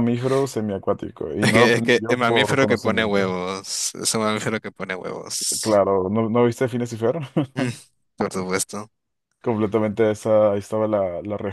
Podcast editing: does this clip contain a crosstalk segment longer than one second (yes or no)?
yes